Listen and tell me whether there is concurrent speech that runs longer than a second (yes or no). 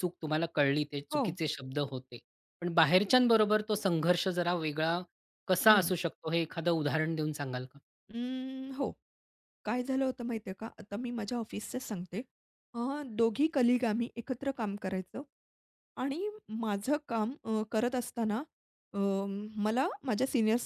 no